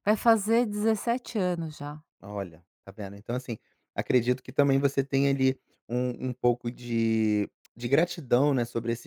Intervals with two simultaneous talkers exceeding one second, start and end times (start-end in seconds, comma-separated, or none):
none